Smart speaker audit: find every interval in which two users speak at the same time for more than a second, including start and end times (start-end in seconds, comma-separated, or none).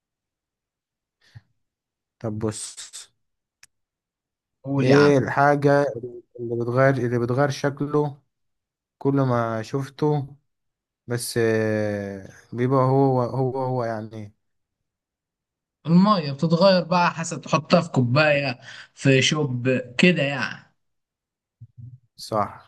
none